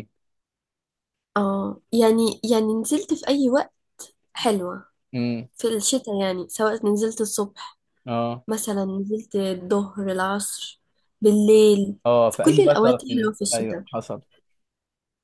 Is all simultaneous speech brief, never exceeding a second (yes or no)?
no